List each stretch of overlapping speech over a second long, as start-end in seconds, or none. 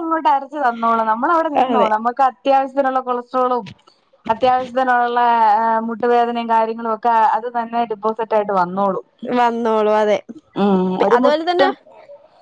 none